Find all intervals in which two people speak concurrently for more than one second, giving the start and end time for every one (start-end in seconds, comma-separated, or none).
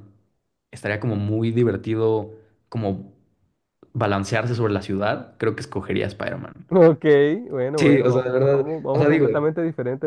7.8-9.5